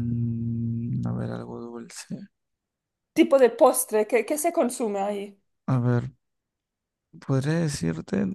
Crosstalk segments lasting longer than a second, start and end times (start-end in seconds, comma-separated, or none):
none